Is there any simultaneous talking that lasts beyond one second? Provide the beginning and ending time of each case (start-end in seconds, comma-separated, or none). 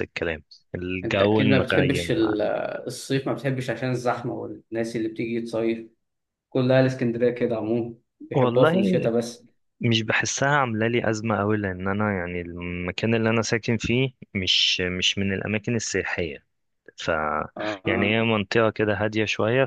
1.0-2.3